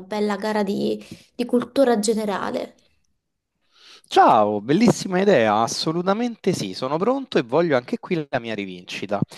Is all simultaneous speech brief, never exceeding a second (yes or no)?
yes